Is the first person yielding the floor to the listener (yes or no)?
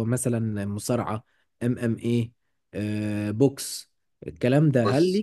no